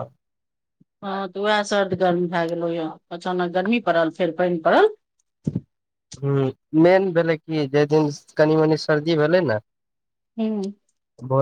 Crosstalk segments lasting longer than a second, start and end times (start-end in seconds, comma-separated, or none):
none